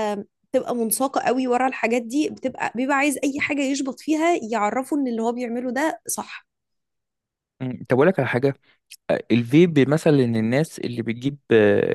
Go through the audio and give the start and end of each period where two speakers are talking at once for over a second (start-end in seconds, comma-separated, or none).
none